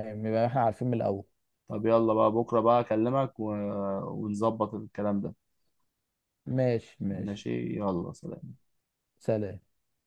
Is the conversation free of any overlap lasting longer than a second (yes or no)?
yes